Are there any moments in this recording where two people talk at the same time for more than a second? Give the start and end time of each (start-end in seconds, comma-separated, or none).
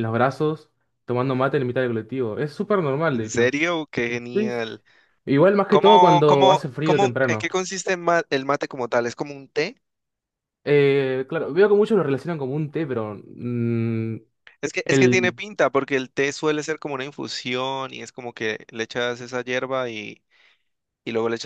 5.7-7.5